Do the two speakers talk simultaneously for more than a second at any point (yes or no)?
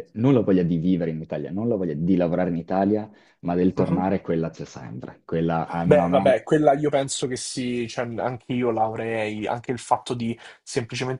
no